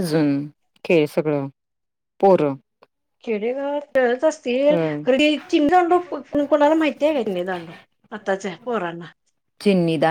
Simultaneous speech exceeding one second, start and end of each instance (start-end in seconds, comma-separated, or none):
none